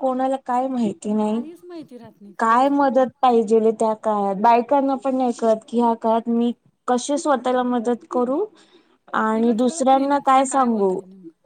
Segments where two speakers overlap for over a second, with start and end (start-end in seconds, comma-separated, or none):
9.3-10.9